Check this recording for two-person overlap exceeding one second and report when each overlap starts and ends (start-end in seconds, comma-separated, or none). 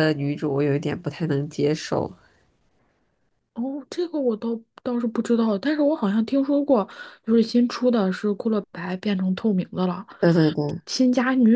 none